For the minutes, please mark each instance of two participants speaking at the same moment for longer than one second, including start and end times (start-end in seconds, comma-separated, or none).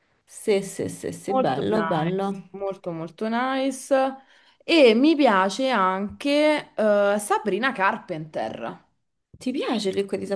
1.3-2.5